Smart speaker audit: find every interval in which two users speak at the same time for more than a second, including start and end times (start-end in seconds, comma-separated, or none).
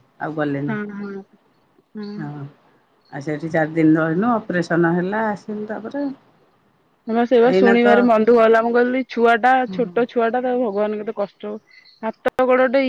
none